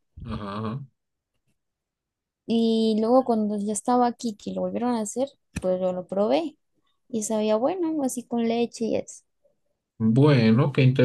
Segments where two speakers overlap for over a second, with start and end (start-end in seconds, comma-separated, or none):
none